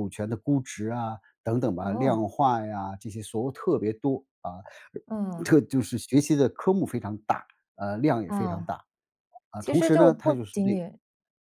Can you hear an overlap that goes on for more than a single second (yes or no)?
yes